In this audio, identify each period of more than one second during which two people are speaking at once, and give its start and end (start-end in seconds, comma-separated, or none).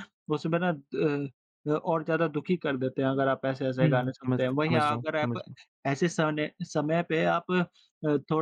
3.8-5.4